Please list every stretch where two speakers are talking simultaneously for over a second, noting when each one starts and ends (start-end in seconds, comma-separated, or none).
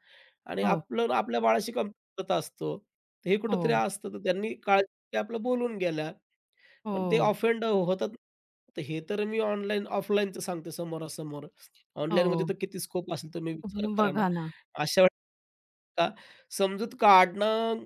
none